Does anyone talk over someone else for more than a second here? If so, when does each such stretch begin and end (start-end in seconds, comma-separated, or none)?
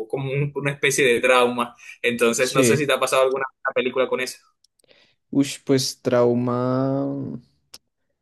none